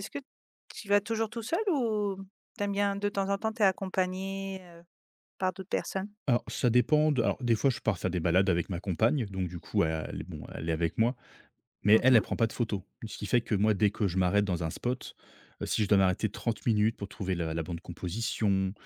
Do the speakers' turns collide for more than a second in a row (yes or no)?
no